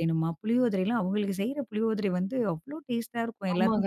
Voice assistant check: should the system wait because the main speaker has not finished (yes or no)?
no